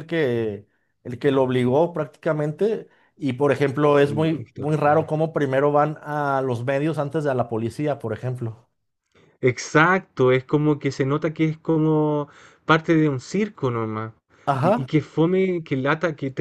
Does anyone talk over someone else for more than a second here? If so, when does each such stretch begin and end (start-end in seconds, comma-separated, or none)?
3.8-5.1